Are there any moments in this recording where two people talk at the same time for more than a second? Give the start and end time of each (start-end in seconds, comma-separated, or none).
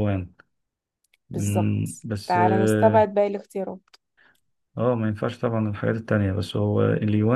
1.3-3.0